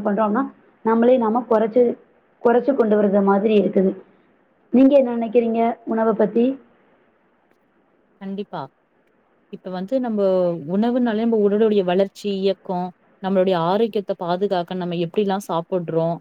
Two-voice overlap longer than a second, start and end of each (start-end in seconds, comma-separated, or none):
none